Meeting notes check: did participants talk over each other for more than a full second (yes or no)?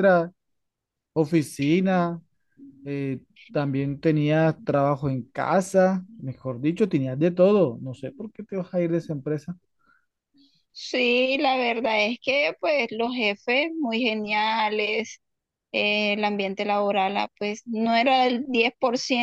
no